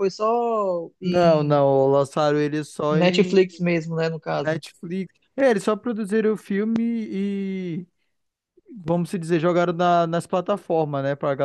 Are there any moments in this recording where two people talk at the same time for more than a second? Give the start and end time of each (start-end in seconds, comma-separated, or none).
none